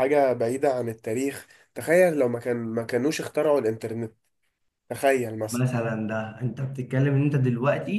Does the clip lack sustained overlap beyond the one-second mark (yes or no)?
yes